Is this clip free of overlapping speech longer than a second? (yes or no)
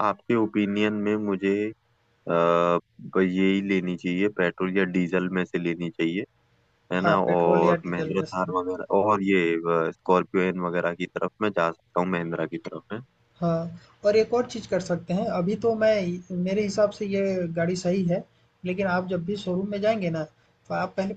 no